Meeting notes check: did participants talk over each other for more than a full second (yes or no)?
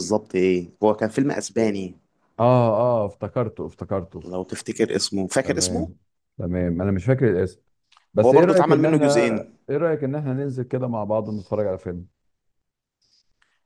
yes